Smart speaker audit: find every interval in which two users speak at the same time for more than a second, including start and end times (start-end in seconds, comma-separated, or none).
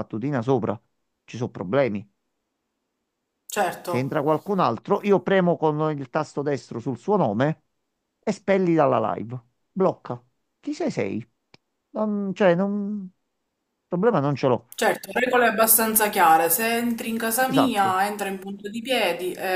none